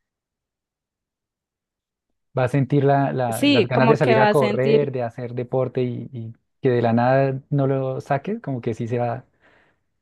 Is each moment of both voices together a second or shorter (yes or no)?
no